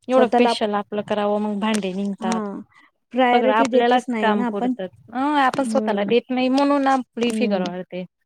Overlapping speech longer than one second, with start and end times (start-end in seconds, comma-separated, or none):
3.3-4.7